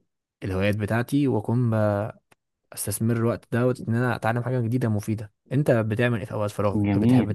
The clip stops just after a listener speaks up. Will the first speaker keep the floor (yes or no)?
no